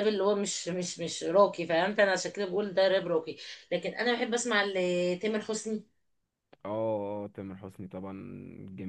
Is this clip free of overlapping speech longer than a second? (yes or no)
yes